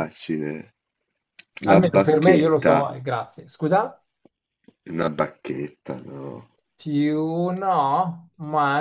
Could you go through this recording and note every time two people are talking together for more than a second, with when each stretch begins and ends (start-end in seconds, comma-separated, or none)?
1.6-2.9